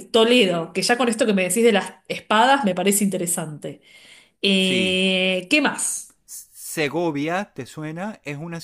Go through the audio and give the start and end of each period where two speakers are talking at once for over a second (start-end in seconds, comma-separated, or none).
none